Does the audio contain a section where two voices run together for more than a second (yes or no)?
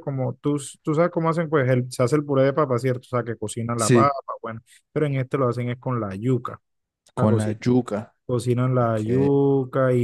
no